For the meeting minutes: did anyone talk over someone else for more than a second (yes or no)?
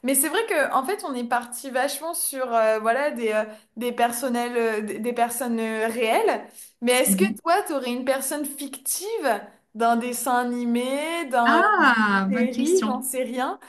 yes